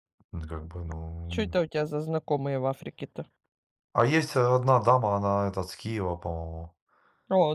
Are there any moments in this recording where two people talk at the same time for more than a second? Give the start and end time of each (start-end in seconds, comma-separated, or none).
none